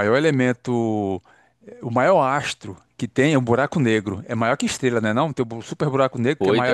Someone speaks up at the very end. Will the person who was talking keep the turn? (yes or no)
no